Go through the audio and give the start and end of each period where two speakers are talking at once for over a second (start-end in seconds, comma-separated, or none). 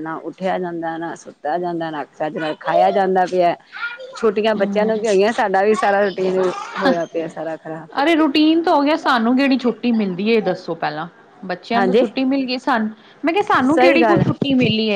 none